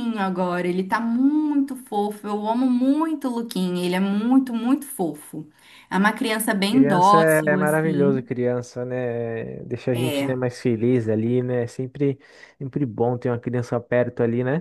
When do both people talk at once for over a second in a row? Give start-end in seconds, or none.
6.7-8.2